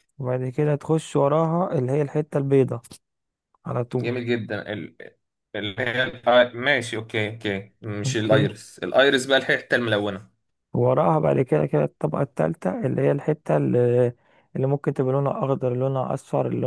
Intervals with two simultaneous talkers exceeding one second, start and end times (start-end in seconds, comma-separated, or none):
none